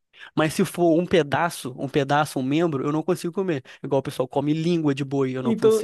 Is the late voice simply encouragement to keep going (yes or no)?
no